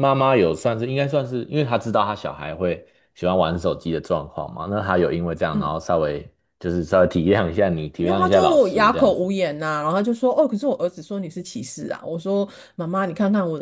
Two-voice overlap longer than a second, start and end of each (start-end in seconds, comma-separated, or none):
8.0-9.3